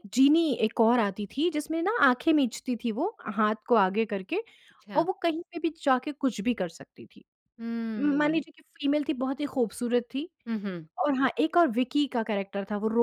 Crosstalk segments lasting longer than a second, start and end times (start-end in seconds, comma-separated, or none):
none